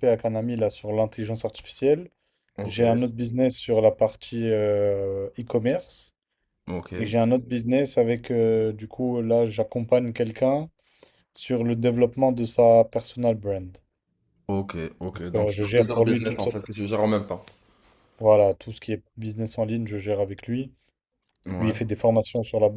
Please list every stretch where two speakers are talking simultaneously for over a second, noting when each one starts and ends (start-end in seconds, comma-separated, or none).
15.3-16.6